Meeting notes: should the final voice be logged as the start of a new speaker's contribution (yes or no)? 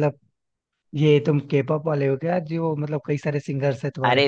yes